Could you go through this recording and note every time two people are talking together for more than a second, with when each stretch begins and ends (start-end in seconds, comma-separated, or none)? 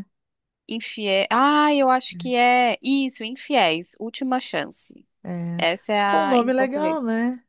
5.6-7.0